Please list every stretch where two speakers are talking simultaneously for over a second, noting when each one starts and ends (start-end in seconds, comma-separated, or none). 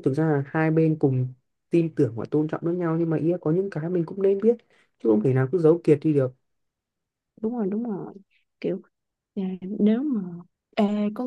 none